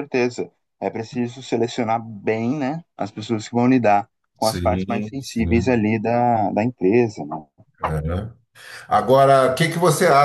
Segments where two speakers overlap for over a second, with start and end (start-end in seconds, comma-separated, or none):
4.4-5.8